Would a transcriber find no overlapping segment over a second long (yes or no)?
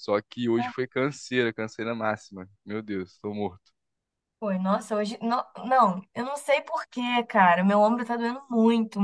yes